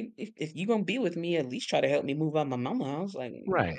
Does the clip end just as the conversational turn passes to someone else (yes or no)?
yes